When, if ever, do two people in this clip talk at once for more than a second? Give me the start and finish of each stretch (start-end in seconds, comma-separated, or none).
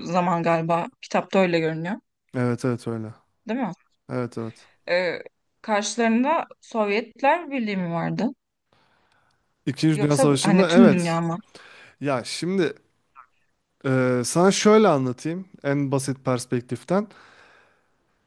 9.9-11.2